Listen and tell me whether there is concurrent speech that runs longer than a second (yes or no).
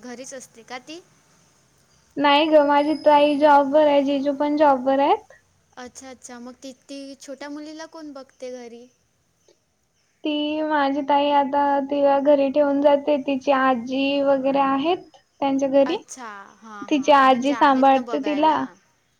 yes